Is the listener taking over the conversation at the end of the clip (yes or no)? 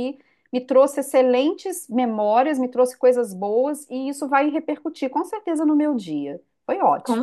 yes